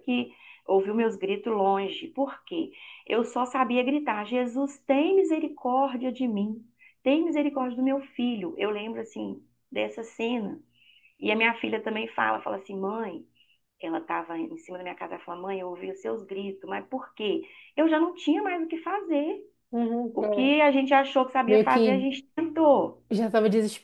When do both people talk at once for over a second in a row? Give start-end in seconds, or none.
none